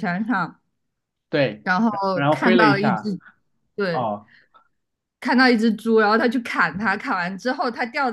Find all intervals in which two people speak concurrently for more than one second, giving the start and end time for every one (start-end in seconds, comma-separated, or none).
1.6-3.1